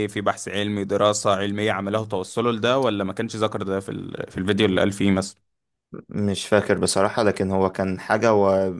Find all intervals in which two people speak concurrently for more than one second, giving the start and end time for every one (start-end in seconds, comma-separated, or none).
none